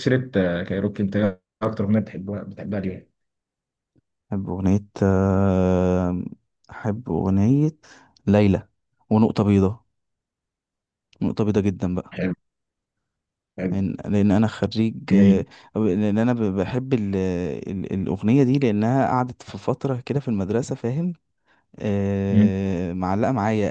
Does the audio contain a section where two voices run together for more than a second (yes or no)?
no